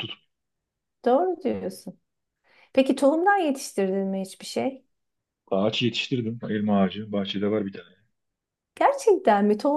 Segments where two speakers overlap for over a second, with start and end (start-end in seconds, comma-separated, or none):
none